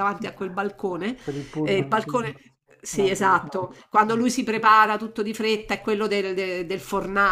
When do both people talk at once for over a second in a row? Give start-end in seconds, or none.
none